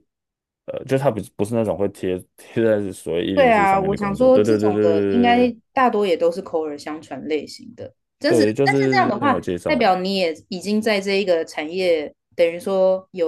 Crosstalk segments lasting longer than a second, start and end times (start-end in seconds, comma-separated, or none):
3.4-4.8, 8.2-9.9